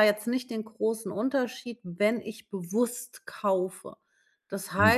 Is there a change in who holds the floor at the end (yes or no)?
yes